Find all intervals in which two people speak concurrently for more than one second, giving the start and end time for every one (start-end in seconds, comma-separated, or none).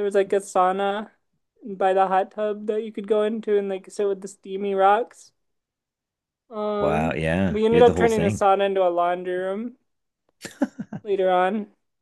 6.8-8.4